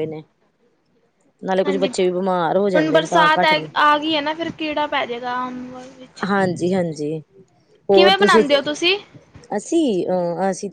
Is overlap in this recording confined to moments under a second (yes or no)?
no